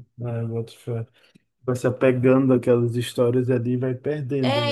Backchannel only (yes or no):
no